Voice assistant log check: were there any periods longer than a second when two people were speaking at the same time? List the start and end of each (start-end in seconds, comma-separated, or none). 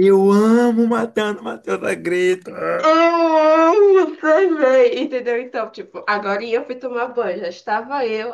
none